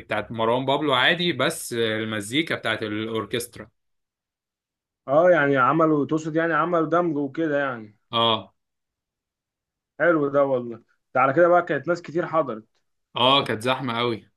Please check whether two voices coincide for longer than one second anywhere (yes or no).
no